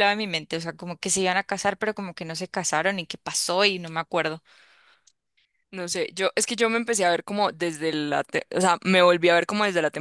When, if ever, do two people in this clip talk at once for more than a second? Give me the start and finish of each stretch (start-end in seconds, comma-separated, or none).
none